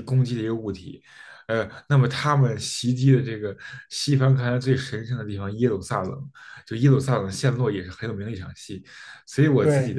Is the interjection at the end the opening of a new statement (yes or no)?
no